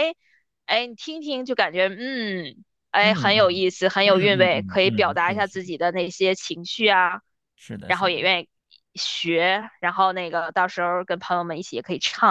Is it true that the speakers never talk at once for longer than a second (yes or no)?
no